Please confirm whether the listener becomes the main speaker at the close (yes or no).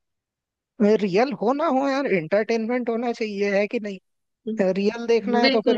no